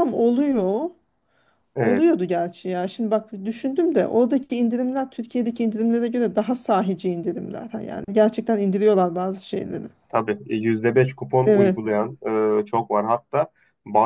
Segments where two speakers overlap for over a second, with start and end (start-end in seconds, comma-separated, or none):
none